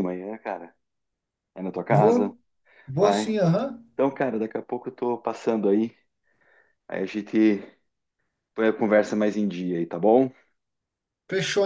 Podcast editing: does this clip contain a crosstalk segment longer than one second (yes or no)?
no